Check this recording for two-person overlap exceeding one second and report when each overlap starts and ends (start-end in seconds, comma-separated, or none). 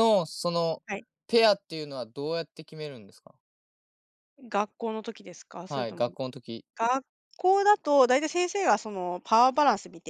none